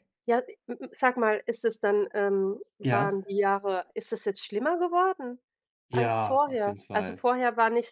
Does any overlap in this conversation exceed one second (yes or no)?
yes